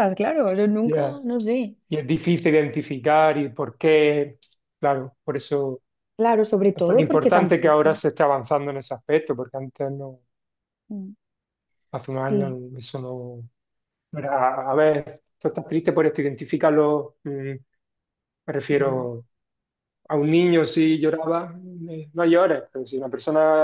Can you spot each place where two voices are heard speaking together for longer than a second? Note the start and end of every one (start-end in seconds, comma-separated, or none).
6.7-8.0